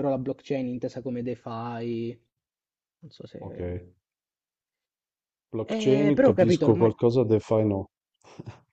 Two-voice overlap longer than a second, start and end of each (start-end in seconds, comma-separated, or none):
5.7-6.9